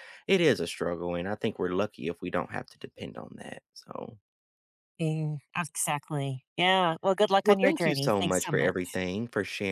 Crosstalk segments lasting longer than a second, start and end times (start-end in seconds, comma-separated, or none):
7.4-8.9